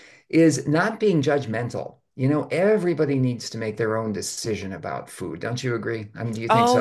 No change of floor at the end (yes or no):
no